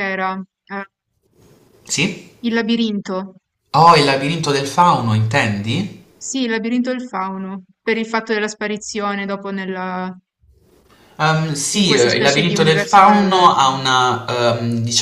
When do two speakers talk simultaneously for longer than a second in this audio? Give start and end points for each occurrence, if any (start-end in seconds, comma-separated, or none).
11.7-13.6